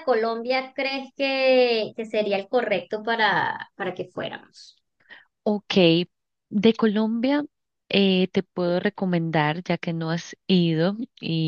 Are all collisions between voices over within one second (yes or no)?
yes